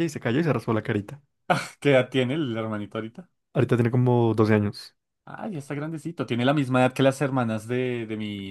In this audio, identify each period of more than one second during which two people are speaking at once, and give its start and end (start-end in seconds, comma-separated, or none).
none